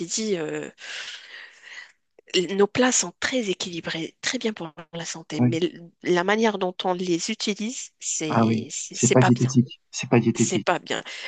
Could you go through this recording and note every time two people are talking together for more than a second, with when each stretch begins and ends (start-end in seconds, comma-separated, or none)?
8.3-9.6